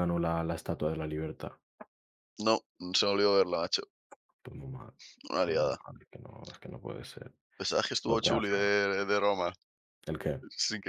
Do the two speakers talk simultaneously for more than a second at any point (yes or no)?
no